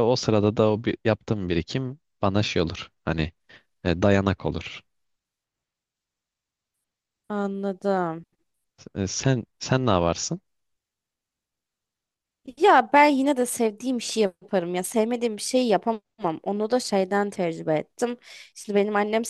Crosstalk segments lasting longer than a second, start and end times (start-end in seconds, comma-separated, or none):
none